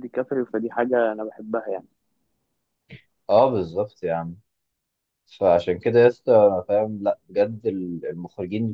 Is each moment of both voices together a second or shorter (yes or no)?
yes